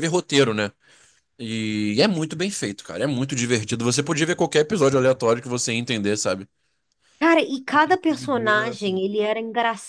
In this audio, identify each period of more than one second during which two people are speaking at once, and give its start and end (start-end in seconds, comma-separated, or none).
7.7-9.0